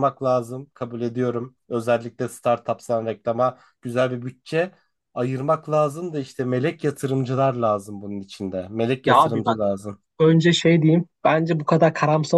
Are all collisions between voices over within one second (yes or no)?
yes